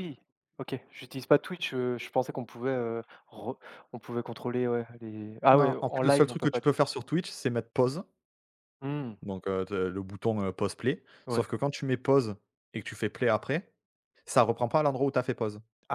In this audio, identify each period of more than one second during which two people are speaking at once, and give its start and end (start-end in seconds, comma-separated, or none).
5.5-6.8